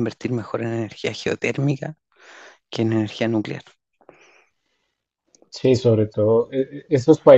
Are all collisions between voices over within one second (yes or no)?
yes